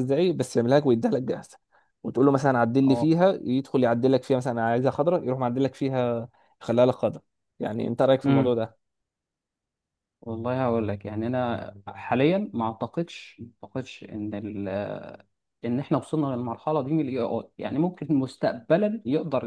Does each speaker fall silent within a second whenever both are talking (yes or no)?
yes